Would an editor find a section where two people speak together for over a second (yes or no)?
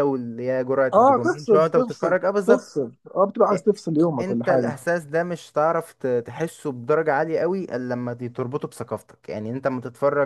yes